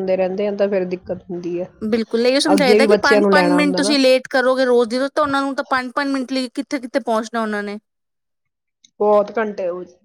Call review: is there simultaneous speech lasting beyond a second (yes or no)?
yes